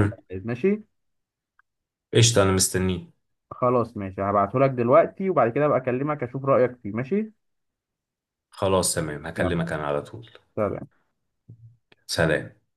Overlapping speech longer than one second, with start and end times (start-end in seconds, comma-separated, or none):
none